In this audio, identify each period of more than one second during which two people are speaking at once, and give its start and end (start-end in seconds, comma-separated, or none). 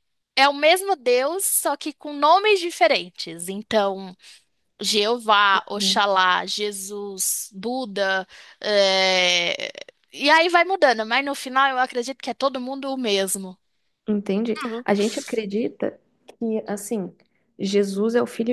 none